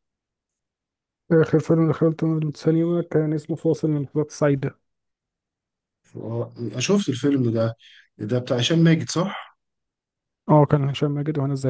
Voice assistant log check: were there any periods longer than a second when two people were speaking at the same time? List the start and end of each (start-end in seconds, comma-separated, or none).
none